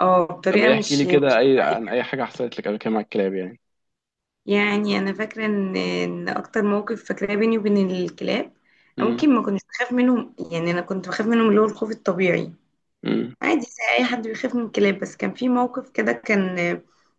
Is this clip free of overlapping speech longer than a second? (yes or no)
no